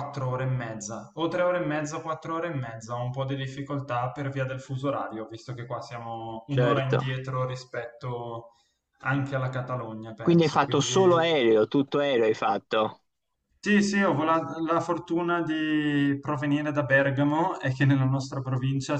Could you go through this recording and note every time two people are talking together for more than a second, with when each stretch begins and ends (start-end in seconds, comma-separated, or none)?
10.2-11.4